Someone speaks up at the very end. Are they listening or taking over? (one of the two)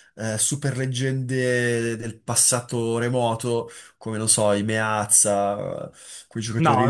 taking over